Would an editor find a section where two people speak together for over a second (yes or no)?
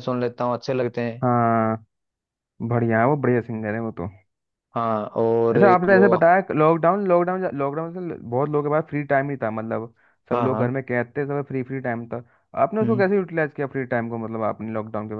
no